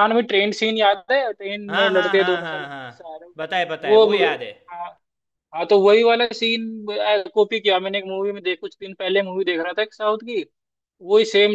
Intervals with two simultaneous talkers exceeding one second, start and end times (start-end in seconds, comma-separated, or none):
1.7-2.9